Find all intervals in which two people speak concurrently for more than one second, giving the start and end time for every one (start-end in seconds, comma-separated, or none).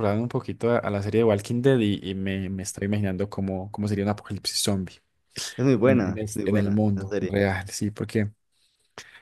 5.8-7.4